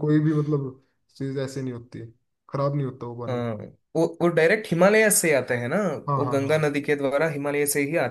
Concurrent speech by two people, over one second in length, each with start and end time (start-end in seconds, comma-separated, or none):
none